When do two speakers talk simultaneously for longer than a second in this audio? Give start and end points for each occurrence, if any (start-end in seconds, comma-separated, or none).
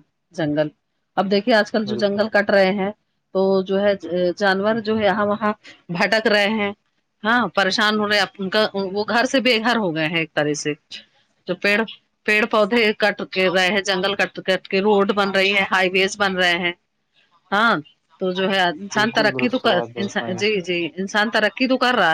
18.9-20.4